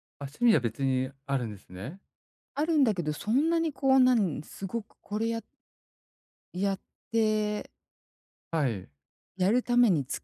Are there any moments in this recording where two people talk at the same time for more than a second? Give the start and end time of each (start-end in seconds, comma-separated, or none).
none